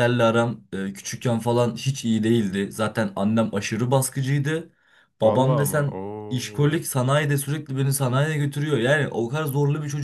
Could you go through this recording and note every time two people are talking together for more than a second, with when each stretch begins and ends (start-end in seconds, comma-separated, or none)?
5.2-6.8